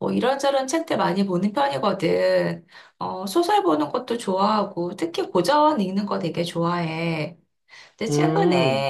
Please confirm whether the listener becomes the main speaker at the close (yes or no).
no